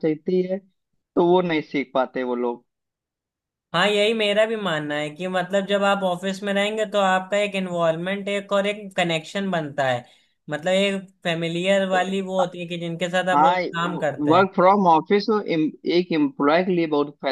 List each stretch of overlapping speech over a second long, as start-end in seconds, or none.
none